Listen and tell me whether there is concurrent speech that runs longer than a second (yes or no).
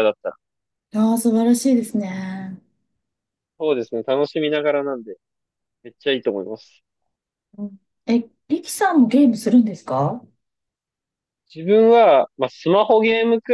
no